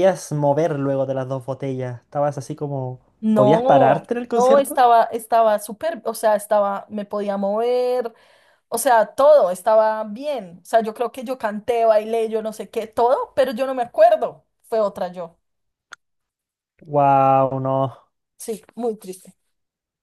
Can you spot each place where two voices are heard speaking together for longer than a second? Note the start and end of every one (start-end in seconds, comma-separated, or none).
3.2-4.8